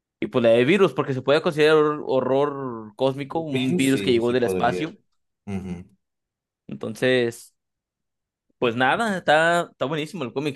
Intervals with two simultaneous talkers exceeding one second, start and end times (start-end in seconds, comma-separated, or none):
3.3-4.9